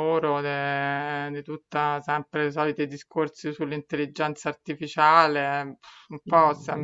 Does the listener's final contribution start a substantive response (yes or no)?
no